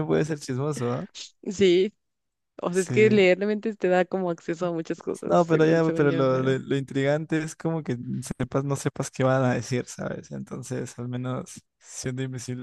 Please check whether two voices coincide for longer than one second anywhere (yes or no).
yes